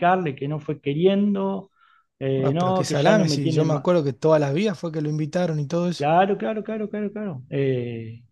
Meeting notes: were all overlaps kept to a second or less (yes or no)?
no